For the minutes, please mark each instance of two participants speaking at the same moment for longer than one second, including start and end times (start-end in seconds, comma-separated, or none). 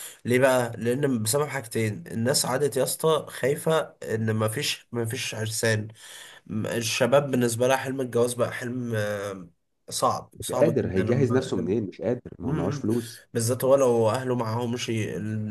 10.3-11.7